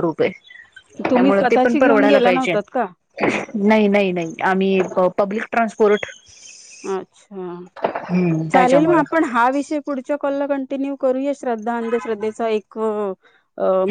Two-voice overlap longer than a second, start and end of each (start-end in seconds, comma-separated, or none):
1.1-2.5